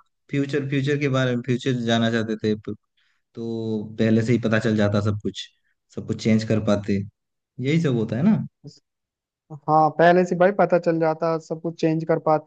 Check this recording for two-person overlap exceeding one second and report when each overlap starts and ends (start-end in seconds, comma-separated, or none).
none